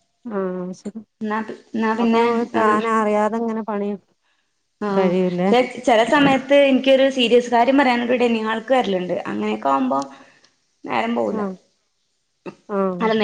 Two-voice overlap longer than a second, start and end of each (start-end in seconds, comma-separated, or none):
none